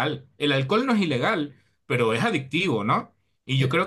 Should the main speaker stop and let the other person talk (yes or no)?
no